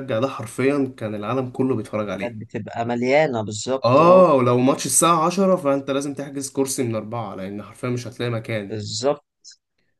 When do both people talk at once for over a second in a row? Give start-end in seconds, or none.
none